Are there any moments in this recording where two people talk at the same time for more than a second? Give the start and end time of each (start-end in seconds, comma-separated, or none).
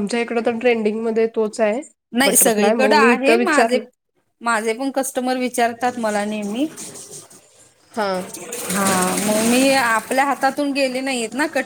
2.2-3.8